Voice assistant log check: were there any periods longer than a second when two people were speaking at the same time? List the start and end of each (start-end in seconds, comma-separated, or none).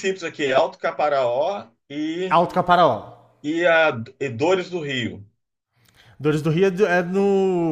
none